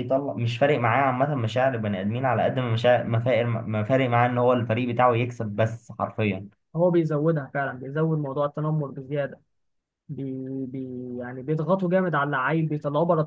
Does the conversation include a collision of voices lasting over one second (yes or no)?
no